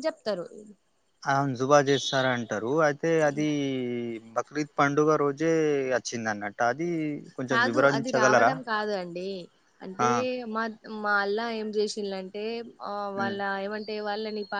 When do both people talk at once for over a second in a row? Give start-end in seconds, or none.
none